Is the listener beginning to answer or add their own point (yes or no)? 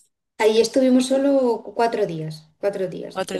no